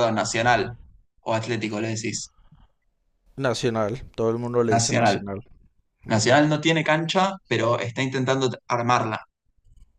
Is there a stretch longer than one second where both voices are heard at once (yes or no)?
no